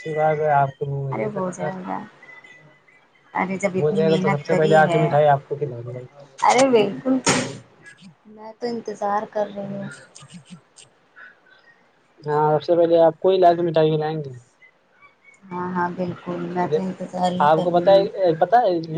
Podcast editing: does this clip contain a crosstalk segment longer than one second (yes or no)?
yes